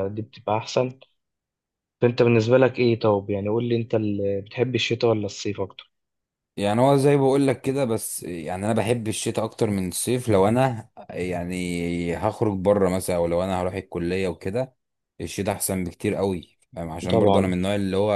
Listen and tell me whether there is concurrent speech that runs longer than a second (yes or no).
no